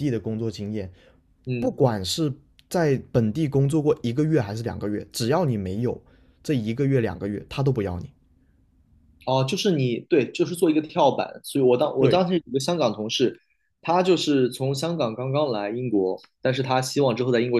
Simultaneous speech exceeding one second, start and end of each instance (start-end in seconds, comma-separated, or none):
none